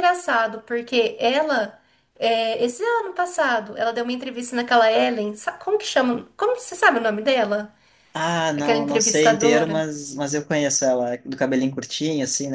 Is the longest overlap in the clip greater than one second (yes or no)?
yes